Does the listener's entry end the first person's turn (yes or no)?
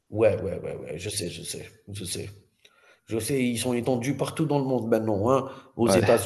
no